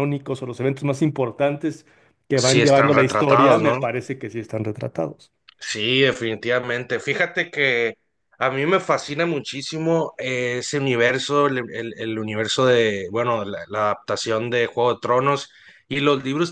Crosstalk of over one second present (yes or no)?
yes